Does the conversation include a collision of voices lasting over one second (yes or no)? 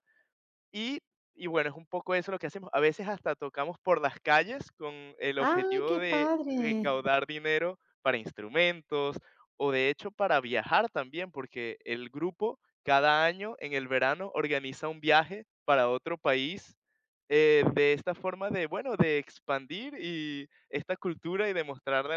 yes